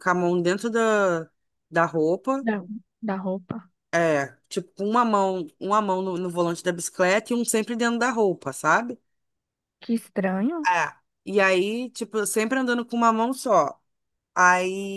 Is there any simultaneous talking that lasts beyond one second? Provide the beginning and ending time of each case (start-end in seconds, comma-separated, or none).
none